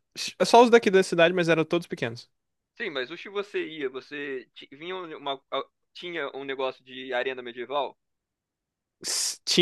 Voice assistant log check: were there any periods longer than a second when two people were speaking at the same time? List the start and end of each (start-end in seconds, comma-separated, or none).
none